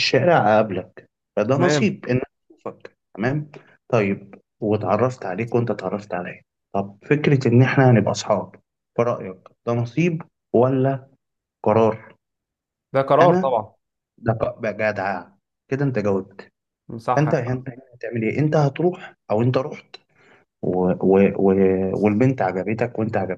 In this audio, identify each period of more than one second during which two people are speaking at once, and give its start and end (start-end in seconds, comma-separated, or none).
none